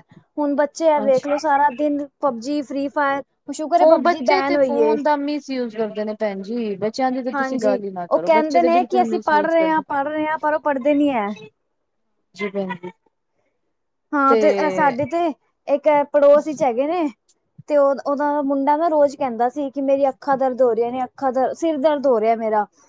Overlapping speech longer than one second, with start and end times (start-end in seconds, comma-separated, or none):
7.3-9.8